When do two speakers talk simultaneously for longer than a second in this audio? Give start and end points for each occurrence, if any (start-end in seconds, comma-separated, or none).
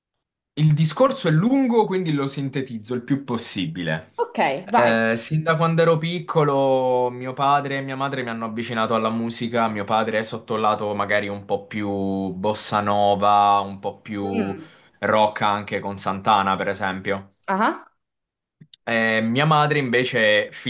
none